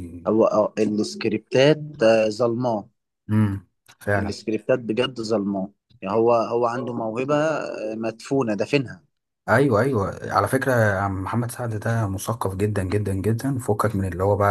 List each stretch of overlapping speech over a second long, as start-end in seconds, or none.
none